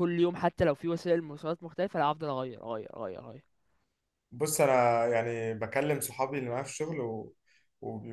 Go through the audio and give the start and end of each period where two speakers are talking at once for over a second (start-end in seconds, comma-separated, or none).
none